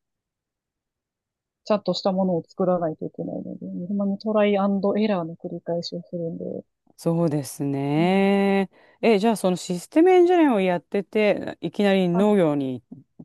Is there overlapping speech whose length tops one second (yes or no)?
no